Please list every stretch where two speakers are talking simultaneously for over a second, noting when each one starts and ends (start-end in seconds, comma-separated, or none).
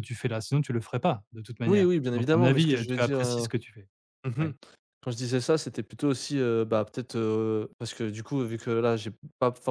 1.7-3.5